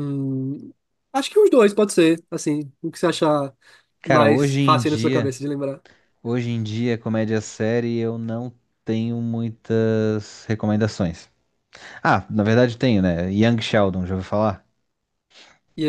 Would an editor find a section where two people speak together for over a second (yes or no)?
yes